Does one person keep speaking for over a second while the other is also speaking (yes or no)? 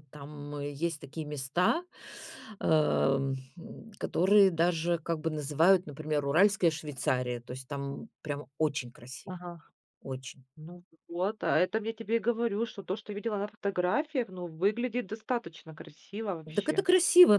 no